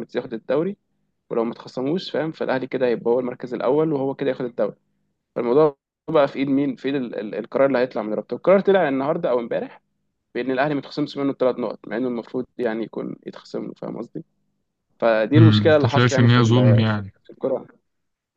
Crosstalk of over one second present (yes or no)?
yes